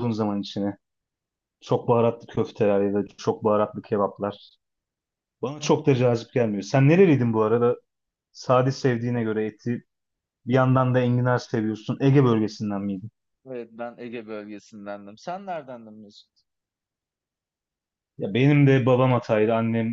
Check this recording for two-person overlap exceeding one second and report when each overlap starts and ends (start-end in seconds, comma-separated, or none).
none